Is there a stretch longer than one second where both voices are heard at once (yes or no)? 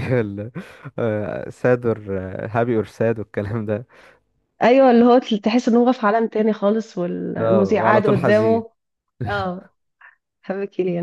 yes